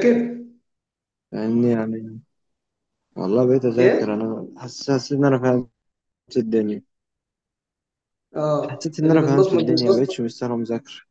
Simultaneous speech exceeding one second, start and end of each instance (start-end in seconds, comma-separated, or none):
8.7-10.2